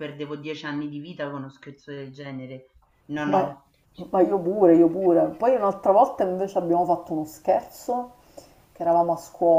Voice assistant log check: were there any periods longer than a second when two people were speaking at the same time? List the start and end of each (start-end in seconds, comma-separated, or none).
none